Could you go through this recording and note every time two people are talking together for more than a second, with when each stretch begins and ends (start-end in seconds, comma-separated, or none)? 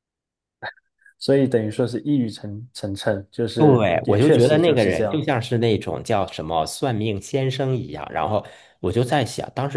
3.6-5.3